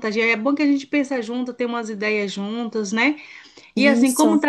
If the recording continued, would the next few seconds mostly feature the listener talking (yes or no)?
no